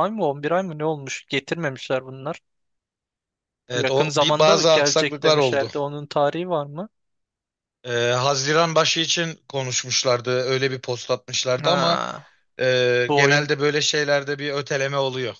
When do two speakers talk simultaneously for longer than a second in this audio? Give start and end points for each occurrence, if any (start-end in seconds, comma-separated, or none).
3.7-5.7